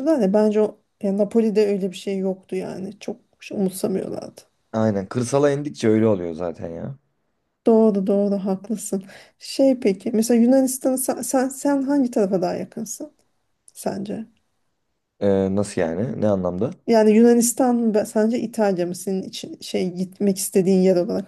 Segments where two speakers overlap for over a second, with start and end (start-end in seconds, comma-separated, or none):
none